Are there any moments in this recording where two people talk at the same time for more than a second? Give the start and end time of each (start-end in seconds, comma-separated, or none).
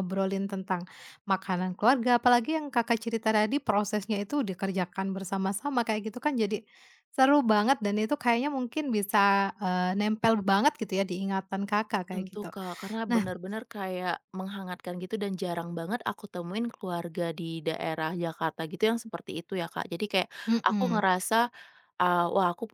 none